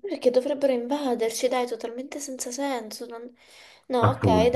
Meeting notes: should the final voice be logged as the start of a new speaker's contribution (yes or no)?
no